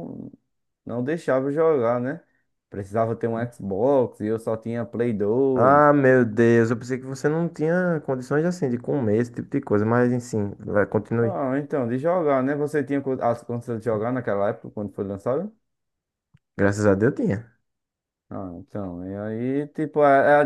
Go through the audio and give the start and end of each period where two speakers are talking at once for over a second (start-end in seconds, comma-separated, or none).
none